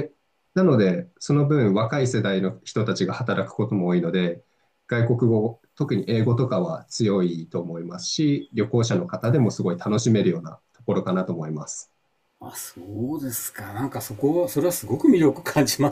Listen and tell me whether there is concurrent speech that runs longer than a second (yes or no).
no